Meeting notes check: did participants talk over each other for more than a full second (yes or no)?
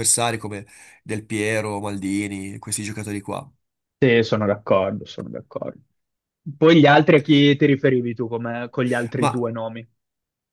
no